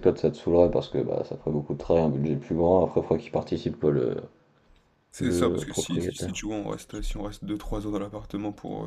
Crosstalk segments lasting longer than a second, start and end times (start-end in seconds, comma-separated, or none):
5.2-6.4